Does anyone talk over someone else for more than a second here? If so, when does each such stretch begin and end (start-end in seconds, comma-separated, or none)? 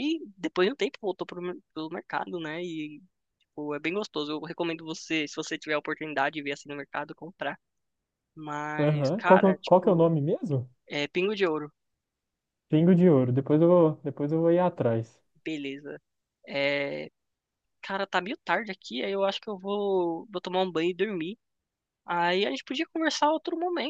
8.8-10.1